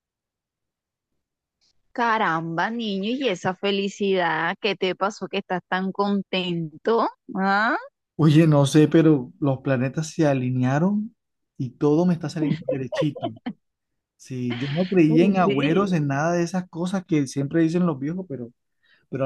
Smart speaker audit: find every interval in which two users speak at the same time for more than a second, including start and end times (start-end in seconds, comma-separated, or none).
none